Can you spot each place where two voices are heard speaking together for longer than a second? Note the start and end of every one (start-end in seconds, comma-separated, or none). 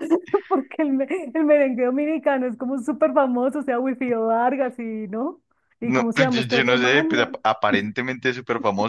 5.8-7.4